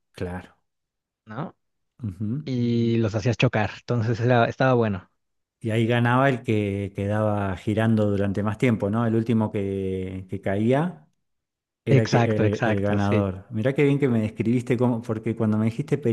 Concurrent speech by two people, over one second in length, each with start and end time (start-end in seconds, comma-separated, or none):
11.9-13.3